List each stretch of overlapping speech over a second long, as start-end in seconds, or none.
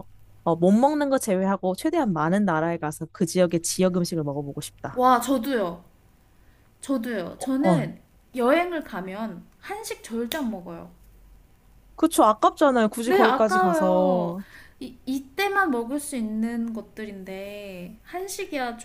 13.0-14.4